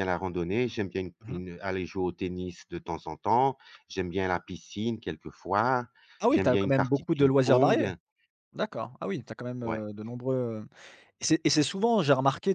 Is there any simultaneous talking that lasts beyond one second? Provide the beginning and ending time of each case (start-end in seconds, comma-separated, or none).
6.3-7.9